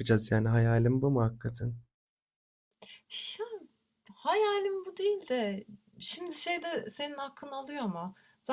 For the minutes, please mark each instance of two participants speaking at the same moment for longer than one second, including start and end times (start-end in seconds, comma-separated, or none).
none